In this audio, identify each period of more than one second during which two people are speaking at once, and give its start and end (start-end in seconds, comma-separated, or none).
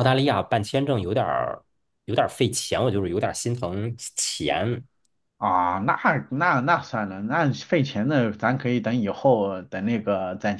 none